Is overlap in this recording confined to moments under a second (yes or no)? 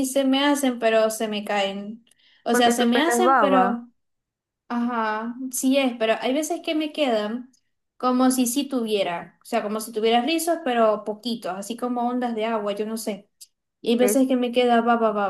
no